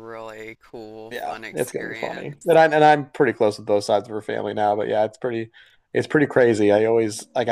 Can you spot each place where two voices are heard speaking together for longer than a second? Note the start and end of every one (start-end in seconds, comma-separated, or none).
1.1-2.6